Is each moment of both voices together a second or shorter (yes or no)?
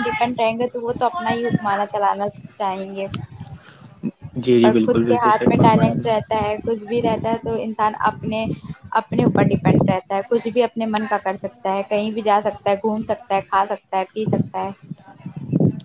no